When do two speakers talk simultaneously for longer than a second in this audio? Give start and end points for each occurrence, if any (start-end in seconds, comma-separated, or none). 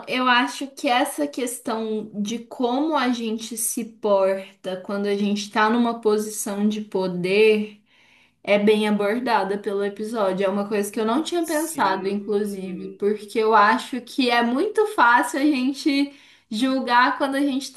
11.5-13.0